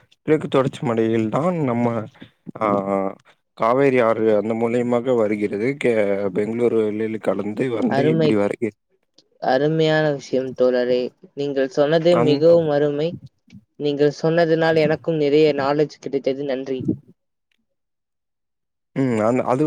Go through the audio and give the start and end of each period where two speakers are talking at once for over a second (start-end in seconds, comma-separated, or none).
none